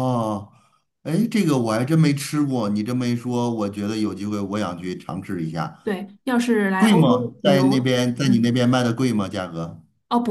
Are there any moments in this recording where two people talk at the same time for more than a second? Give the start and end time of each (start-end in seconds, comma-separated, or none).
6.8-8.6